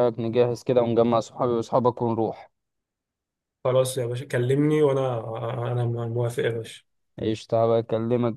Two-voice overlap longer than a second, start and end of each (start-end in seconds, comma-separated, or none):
none